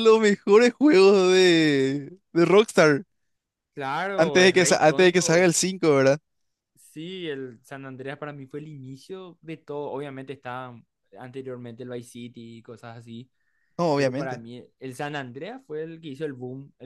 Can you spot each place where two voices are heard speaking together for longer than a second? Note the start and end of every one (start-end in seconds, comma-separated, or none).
4.2-5.5